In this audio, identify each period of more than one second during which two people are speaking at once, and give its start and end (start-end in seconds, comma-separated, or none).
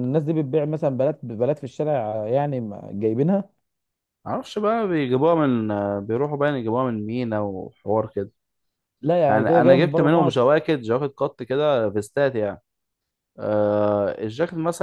9.3-10.5